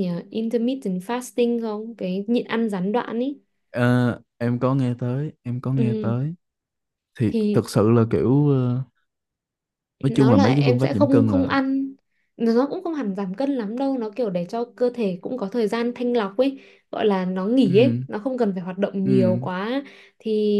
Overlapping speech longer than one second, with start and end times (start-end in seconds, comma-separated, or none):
10.1-11.5